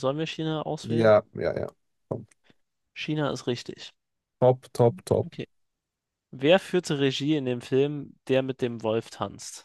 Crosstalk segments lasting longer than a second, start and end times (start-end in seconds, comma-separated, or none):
none